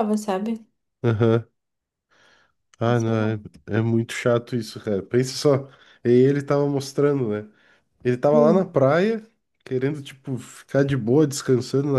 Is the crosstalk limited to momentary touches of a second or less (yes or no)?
yes